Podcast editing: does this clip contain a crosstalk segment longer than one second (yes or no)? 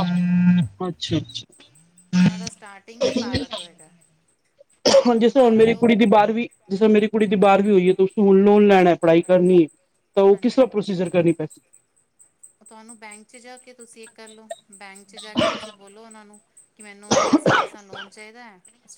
no